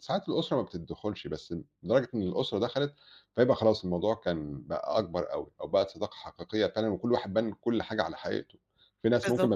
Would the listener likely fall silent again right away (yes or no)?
yes